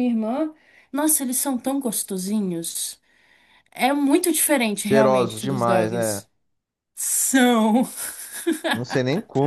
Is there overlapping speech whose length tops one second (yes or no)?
yes